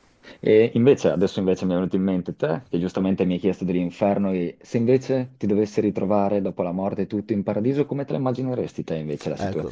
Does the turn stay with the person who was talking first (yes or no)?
no